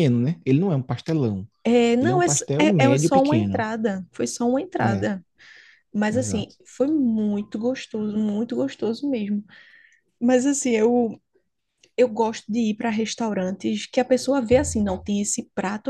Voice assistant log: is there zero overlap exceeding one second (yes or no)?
no